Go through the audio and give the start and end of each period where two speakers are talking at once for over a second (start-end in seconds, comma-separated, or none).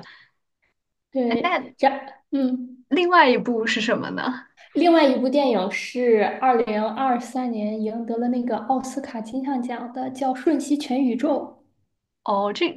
none